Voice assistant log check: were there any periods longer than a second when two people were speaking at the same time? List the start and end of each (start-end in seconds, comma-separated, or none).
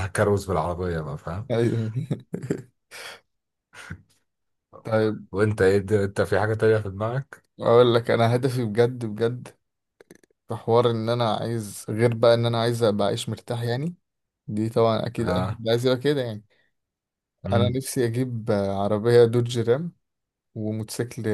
none